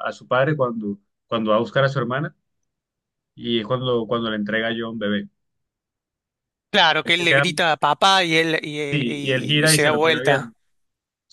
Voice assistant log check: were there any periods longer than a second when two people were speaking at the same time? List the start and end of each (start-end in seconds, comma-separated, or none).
8.9-10.5